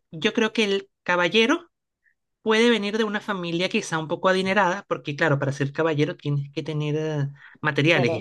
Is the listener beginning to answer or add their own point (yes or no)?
no